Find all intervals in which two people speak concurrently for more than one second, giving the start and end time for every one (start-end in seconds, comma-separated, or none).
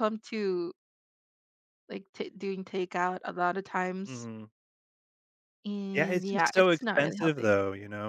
5.9-7.6